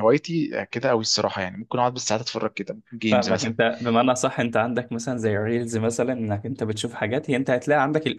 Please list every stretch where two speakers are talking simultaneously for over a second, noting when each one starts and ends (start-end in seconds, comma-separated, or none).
none